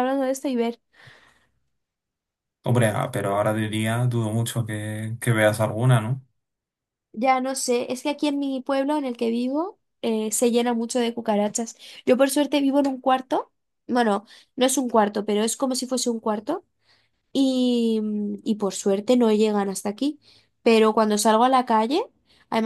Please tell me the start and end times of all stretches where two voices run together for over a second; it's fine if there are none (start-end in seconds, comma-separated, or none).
none